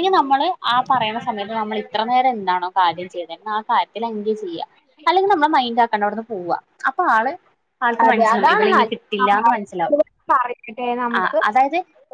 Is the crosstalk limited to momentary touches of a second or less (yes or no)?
no